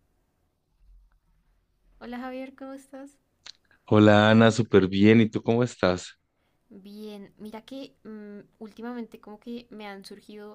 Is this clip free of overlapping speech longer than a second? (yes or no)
yes